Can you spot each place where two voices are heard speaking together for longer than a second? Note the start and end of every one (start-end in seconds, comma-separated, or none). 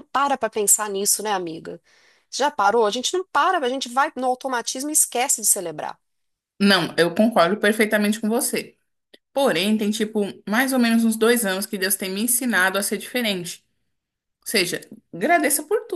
none